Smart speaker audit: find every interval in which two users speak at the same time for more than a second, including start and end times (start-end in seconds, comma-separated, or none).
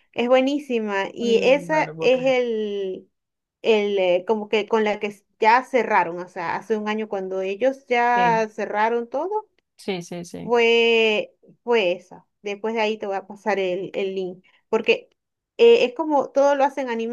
1.2-2.4